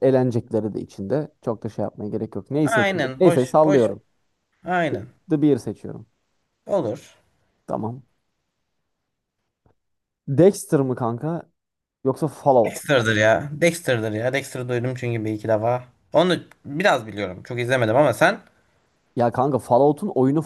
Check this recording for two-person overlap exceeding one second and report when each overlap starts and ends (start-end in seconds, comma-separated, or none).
2.6-3.9